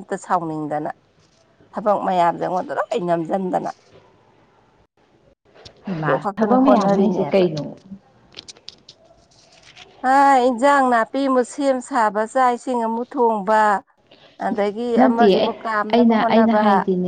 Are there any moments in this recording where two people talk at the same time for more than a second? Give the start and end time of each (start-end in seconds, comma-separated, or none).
6.0-7.4